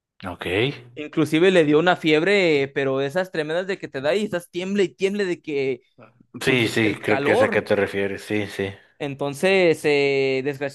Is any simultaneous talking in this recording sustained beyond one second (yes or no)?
yes